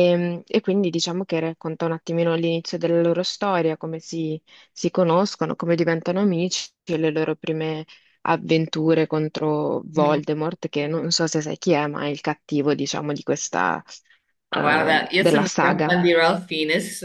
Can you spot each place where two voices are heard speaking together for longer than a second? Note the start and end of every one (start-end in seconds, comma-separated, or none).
14.5-16.0